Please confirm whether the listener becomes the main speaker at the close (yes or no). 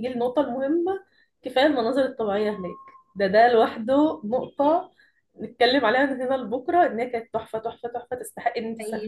yes